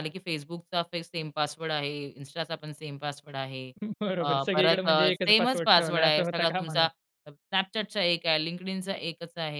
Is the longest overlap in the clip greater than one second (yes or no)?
yes